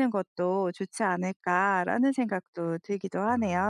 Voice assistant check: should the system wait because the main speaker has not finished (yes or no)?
no